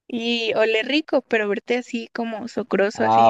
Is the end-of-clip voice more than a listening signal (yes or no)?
yes